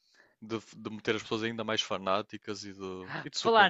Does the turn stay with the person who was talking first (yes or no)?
no